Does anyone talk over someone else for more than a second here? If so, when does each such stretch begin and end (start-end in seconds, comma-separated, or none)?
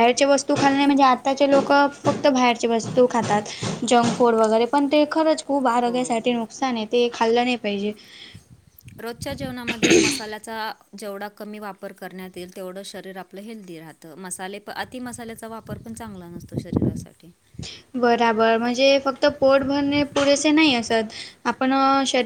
none